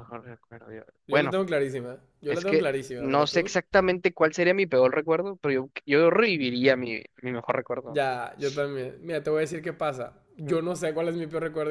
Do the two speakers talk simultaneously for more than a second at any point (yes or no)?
yes